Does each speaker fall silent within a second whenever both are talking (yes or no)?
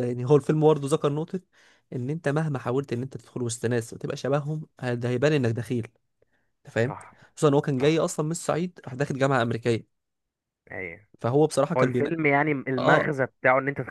yes